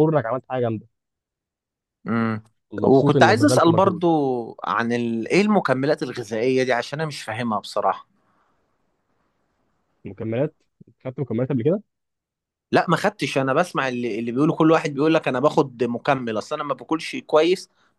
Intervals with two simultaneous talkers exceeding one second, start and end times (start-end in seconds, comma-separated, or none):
2.8-4.0